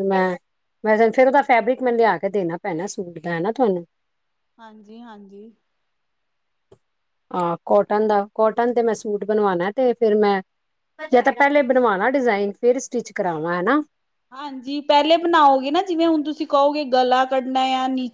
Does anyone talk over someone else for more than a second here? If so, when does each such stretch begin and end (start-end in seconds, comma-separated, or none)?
none